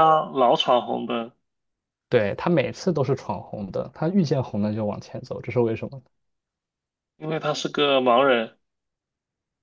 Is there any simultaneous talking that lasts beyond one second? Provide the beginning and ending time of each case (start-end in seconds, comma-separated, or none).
none